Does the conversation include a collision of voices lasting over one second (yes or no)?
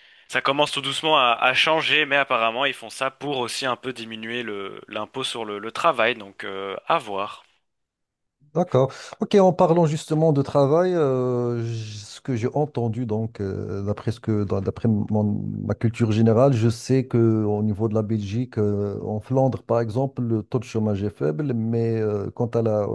no